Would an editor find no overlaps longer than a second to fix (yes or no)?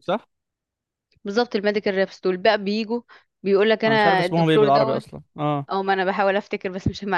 no